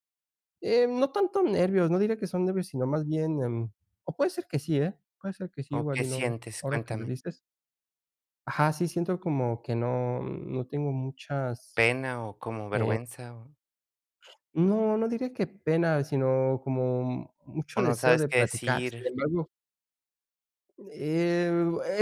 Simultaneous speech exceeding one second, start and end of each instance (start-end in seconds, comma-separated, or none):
5.8-7.1, 17.8-19.1